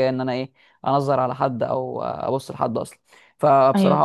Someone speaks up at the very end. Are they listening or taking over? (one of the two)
listening